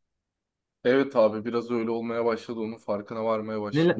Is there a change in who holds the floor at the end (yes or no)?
yes